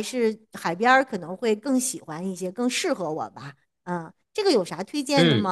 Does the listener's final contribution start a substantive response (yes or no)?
yes